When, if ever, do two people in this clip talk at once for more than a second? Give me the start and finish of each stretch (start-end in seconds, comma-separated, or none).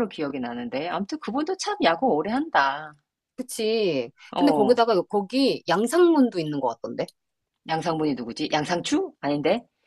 none